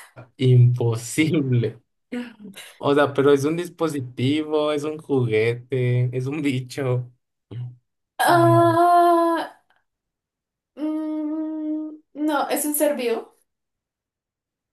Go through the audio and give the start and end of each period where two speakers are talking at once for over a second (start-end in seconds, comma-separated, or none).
none